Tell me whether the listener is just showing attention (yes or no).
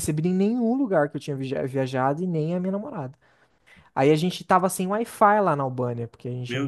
yes